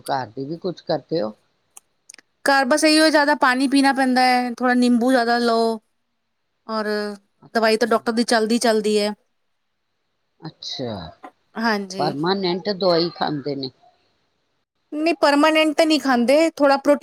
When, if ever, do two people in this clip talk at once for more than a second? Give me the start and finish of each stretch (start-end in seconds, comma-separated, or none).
none